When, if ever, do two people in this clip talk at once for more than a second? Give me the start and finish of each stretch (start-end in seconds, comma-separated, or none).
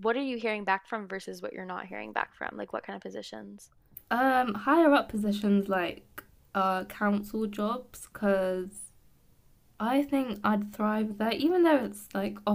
none